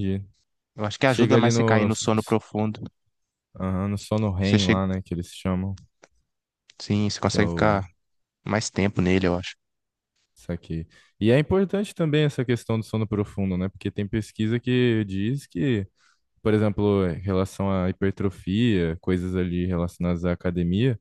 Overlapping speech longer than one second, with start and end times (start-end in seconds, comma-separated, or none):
1.1-2.4